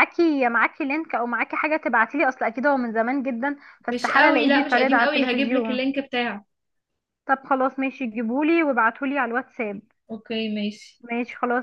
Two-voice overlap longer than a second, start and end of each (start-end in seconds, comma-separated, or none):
3.9-5.8